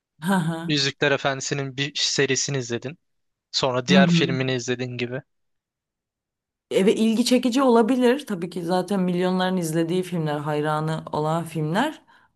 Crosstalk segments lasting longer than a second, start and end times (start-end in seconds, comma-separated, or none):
none